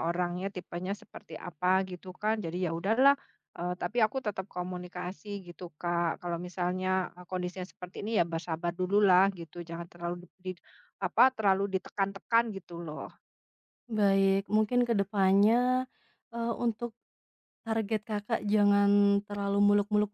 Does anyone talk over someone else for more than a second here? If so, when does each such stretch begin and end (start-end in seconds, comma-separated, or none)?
none